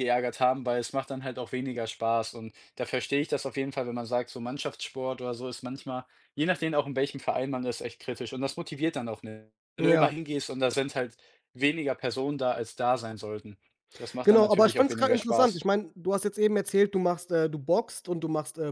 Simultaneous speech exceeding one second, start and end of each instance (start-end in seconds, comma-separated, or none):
14.2-15.7